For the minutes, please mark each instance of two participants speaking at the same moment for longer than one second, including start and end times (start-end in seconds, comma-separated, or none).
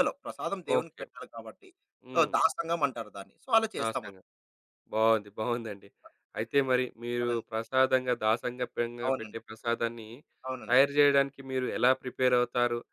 none